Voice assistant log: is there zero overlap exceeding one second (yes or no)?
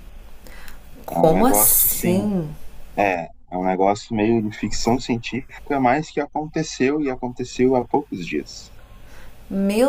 no